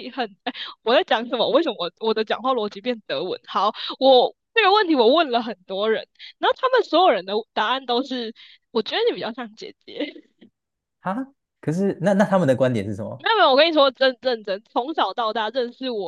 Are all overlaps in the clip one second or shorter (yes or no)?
yes